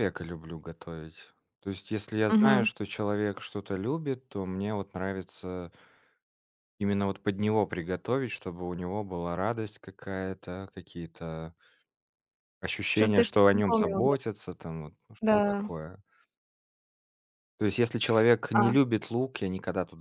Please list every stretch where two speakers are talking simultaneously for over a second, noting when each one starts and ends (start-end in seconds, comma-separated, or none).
12.9-14.2